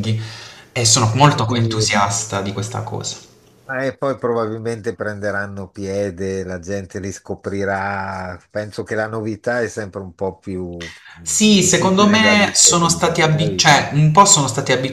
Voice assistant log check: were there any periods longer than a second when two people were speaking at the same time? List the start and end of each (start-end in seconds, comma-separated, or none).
11.2-13.8